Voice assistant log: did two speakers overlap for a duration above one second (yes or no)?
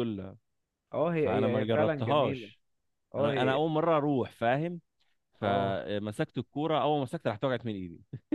yes